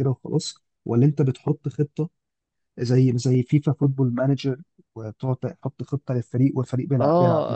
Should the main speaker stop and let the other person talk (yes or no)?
yes